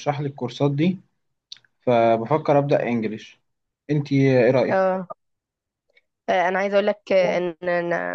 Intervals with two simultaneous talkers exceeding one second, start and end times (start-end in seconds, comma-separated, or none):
none